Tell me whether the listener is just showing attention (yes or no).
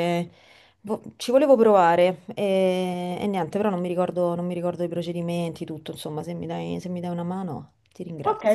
no